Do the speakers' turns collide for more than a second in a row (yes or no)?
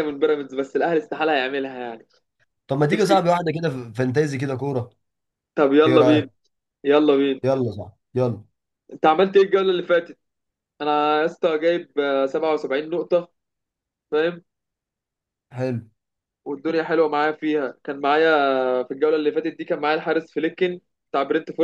no